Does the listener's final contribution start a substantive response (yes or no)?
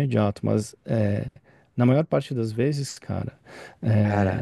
yes